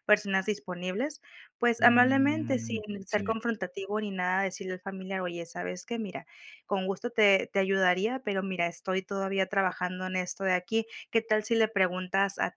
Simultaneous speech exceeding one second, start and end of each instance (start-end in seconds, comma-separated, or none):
1.8-3.4